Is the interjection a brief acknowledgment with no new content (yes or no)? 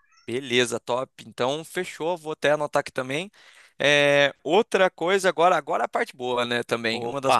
yes